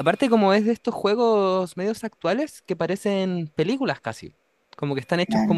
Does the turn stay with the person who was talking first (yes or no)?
yes